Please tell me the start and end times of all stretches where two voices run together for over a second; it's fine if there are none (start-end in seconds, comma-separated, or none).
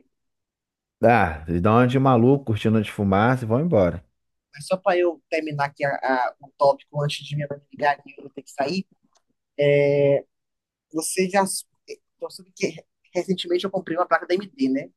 none